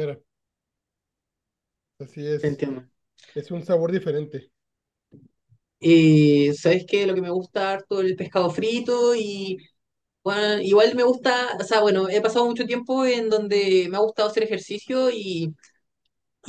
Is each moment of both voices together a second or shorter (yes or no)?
yes